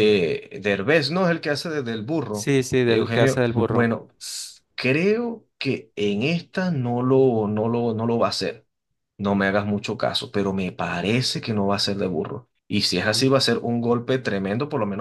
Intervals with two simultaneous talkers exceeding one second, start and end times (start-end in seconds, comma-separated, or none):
2.3-3.9